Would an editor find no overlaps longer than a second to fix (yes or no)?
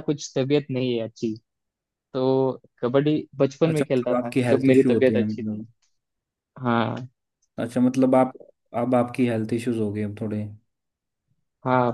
no